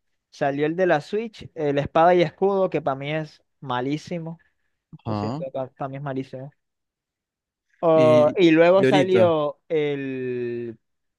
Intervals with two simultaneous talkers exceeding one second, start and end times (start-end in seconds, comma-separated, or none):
7.9-9.4